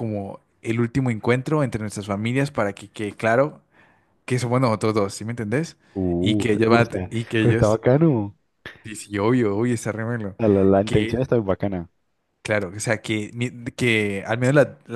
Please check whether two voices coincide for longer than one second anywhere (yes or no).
yes